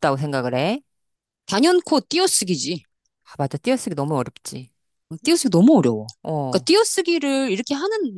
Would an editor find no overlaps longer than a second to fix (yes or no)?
yes